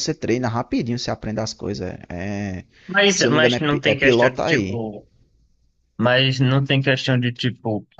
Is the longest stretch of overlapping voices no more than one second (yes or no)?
no